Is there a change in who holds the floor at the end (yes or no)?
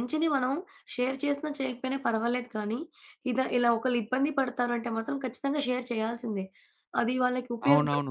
yes